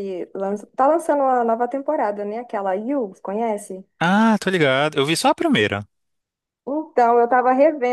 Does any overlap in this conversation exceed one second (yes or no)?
no